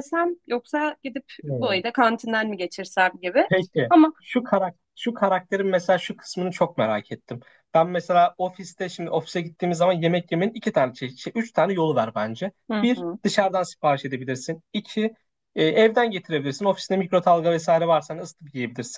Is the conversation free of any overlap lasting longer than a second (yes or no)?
yes